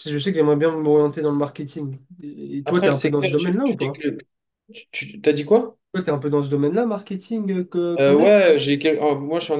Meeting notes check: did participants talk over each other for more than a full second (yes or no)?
yes